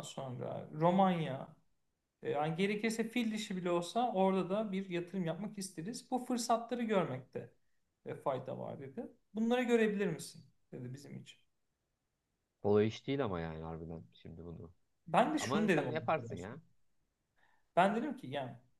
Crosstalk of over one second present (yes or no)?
yes